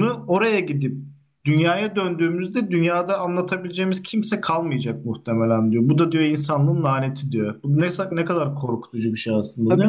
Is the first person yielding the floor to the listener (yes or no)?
yes